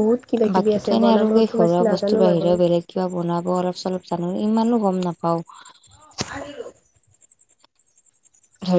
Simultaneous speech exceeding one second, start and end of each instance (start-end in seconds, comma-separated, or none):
0.6-2.5